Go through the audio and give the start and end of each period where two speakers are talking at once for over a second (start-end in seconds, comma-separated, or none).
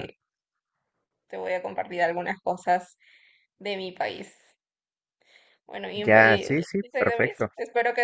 5.9-7.5